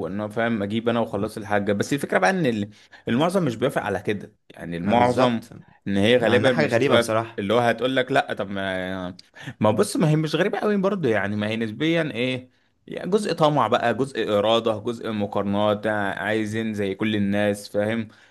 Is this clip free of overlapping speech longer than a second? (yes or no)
no